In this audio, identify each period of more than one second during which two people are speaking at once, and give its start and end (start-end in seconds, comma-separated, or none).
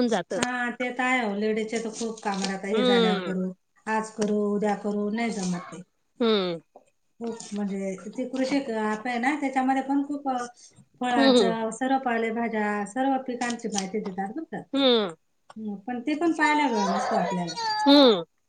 none